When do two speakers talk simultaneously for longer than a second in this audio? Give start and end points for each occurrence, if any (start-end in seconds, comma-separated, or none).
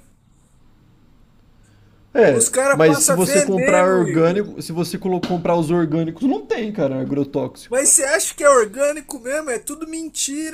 2.3-4.4